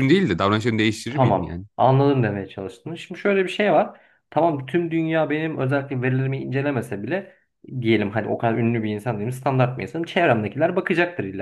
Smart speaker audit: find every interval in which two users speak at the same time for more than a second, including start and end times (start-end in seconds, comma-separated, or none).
none